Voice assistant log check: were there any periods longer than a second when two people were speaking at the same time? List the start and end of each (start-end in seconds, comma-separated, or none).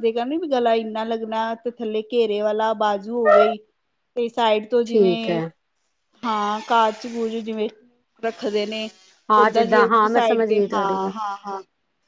9.4-11.1